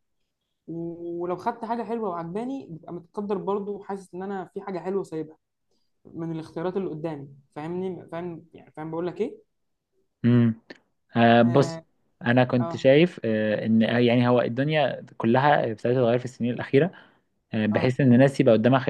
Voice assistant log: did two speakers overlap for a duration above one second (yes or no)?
no